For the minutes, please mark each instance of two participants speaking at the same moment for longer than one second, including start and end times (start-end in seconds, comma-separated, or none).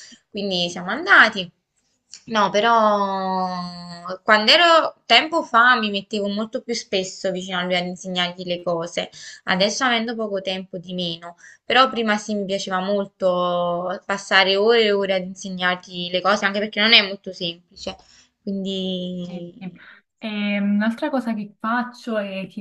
none